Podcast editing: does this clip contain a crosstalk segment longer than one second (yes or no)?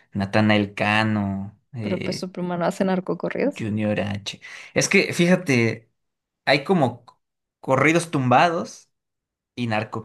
no